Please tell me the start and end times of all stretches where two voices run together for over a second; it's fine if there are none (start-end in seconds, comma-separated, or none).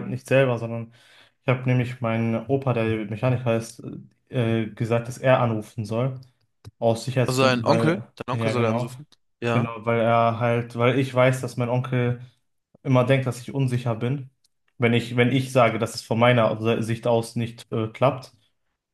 7.2-8.9